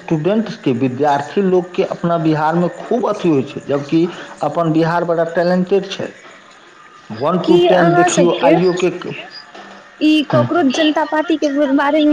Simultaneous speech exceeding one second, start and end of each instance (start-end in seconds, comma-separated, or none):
none